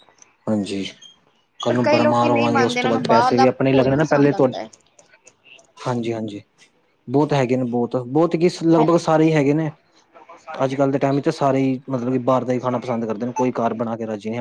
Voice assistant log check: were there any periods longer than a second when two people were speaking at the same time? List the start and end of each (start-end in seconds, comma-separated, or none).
1.7-4.5